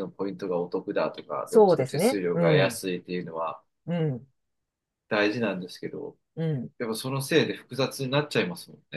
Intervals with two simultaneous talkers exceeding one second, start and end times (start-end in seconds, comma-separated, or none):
1.5-2.8